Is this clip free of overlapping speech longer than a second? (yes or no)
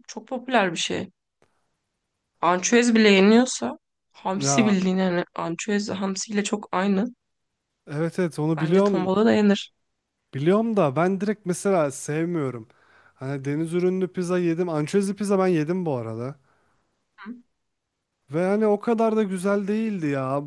yes